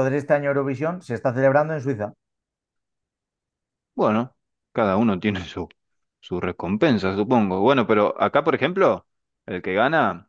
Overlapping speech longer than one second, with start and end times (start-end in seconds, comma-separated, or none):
none